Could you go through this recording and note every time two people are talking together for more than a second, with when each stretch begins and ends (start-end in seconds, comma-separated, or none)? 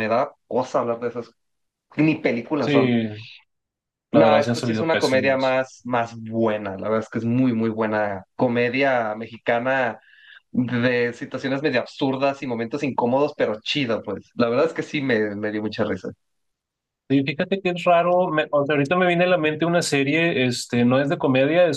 4.1-5.6